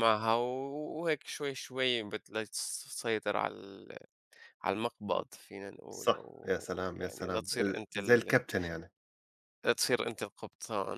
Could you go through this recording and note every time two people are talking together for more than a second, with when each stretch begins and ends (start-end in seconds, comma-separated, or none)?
5.9-8.3